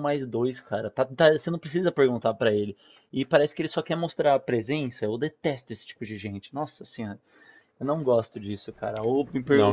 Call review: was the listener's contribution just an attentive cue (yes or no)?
yes